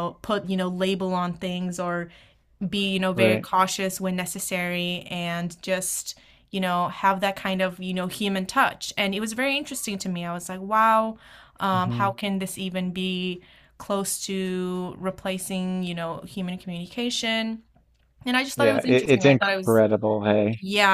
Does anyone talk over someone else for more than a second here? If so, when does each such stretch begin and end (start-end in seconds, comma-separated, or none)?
18.6-19.8